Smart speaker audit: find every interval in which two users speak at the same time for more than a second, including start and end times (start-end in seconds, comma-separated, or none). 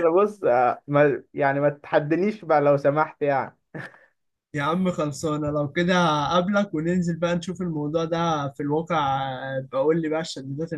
none